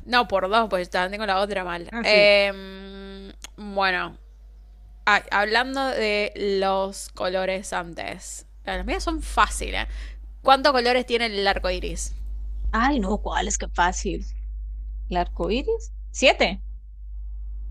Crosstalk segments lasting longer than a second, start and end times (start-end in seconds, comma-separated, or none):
none